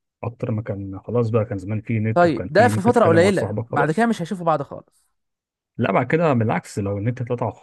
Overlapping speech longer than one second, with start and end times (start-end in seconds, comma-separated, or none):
2.1-4.1